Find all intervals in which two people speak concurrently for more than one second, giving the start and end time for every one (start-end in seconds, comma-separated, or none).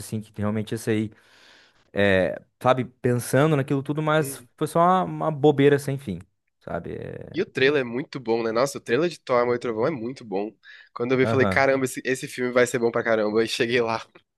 none